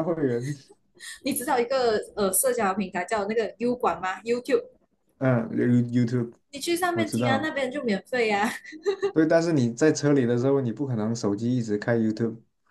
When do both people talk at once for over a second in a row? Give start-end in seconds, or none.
none